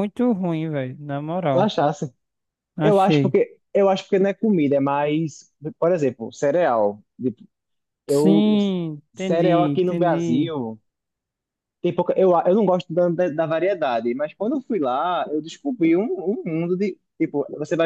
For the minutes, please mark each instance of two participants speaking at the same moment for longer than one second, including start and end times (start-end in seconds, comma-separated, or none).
9.1-10.5